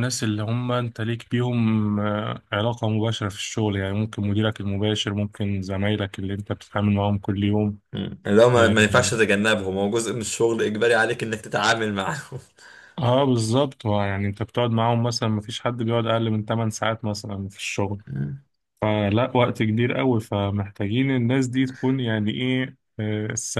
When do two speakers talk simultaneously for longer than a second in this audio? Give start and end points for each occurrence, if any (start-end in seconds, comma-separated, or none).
none